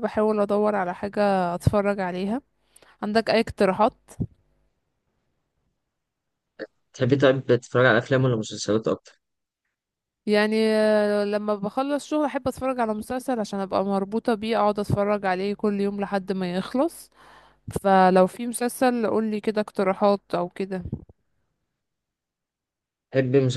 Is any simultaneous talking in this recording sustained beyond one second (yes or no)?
no